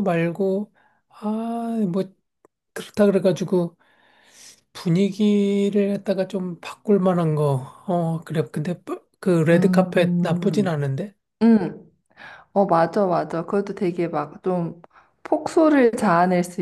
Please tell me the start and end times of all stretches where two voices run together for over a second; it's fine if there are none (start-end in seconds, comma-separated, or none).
9.5-10.8